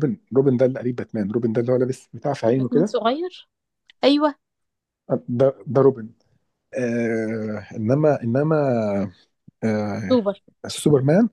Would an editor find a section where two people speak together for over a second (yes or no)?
no